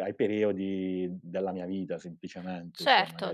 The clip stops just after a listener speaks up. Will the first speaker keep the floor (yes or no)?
no